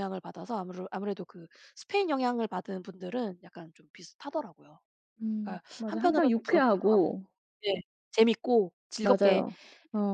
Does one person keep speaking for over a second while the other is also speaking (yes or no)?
yes